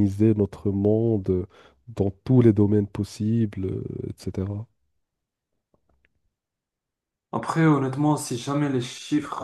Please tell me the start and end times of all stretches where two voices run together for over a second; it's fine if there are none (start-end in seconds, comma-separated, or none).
none